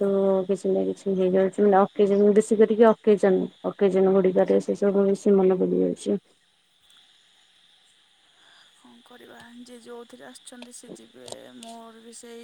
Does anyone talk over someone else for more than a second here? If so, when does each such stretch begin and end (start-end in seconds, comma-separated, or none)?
none